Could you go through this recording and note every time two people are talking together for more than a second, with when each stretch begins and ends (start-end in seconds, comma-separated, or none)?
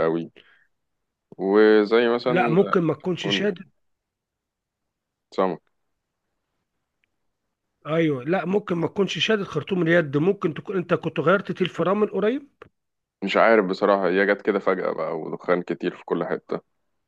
none